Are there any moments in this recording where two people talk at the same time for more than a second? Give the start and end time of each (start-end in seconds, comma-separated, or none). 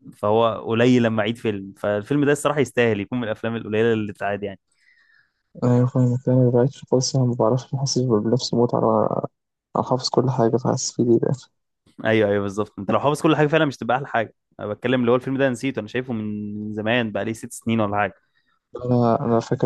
none